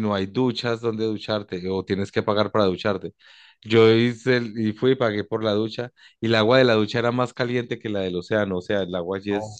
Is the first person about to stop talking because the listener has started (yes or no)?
no